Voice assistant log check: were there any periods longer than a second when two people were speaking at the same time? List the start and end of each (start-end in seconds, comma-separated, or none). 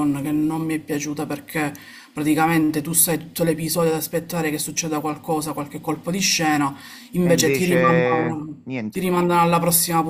7.2-9.1